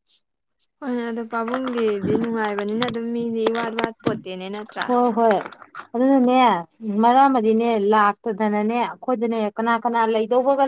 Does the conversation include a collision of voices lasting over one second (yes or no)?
no